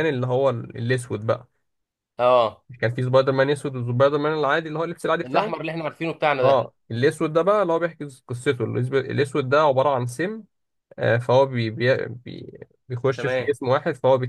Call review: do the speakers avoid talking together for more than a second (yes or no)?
yes